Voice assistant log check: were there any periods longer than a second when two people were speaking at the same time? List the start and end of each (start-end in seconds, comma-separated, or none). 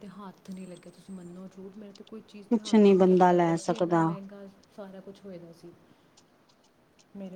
2.5-4.0